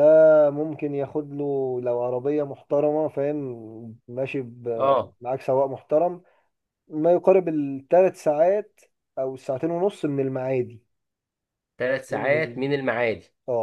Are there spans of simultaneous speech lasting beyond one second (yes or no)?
no